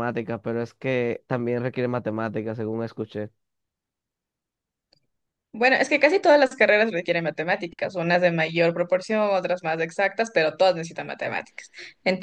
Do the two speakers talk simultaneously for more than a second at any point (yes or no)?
no